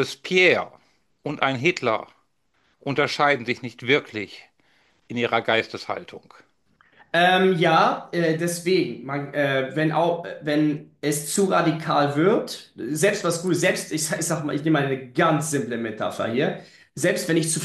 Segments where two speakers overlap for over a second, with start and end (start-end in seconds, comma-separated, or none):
none